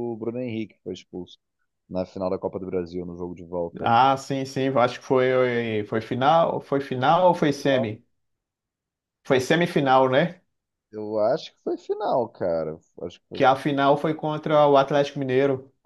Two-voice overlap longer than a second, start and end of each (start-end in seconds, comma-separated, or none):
none